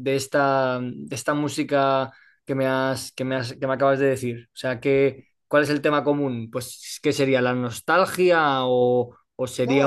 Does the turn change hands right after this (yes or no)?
yes